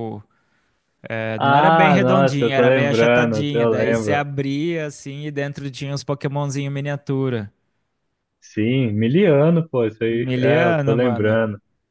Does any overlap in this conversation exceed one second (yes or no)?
yes